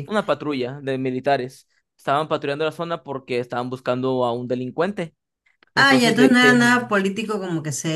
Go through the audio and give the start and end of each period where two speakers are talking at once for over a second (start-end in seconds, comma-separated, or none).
5.7-7.0